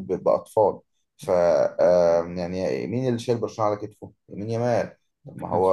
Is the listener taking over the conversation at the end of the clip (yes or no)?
no